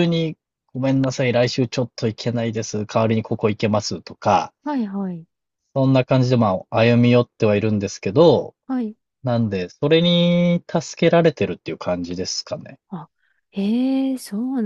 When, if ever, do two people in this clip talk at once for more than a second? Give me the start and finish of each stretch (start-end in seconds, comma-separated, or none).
none